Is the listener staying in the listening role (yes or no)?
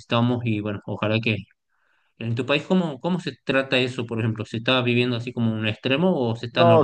no